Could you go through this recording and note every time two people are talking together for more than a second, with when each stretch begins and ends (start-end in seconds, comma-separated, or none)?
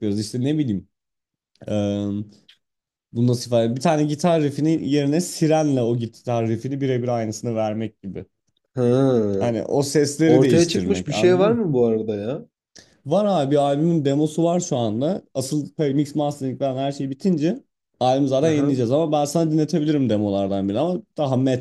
10.3-11.6